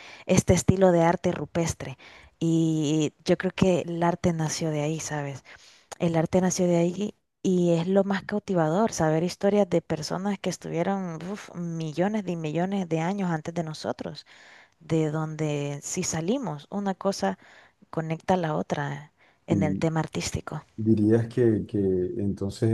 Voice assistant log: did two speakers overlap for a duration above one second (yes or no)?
no